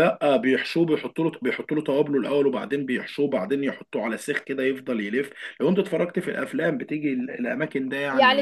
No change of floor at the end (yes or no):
no